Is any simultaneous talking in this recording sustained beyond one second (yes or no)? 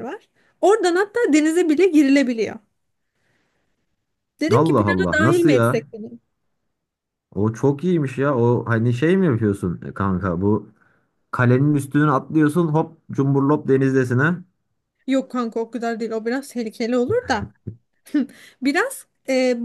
yes